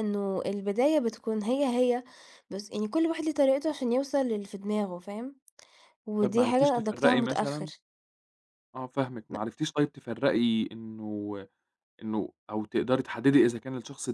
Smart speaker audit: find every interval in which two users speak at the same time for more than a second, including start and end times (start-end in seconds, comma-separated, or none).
6.2-7.7